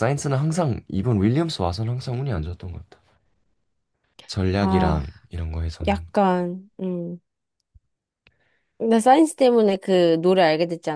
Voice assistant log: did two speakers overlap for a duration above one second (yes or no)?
no